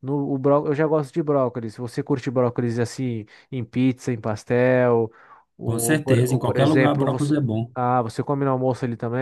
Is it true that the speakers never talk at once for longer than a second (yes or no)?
no